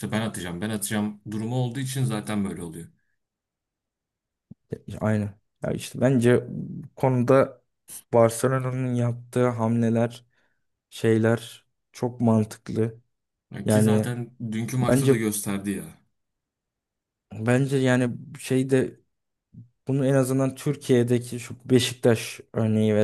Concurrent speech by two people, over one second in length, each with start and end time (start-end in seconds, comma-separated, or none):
none